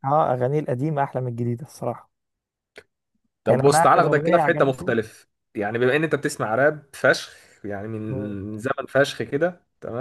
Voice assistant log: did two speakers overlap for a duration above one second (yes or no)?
yes